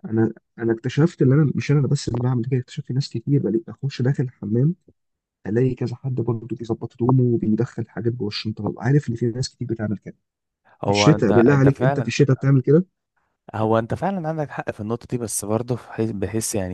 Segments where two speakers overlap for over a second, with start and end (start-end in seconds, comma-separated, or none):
10.8-12.1